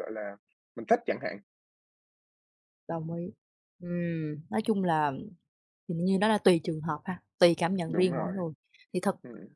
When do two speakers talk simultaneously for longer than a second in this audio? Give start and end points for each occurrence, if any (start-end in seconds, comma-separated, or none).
none